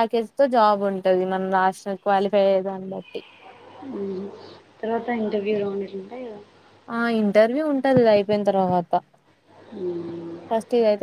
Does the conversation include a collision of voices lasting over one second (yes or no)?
no